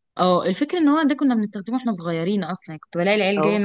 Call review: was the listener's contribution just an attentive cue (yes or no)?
yes